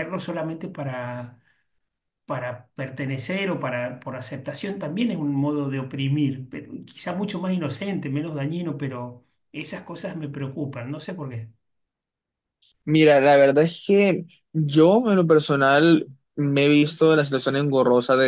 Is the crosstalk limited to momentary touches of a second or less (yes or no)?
yes